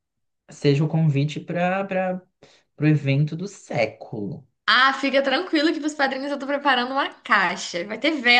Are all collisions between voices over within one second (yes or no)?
yes